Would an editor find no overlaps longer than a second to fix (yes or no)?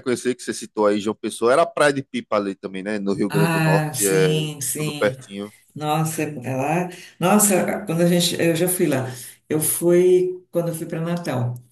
no